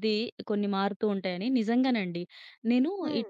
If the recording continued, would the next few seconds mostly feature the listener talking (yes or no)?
no